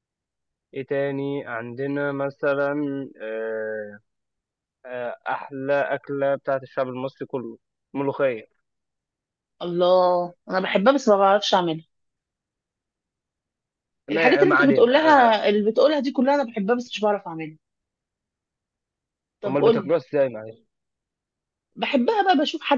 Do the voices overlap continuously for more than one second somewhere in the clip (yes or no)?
yes